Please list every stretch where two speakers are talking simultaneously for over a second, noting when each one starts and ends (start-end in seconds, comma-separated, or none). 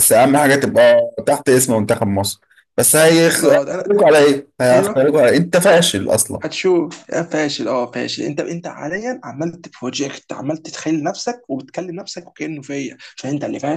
none